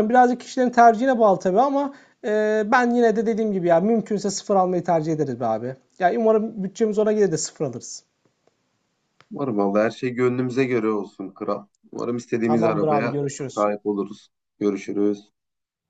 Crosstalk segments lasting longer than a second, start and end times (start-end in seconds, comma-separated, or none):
12.4-13.7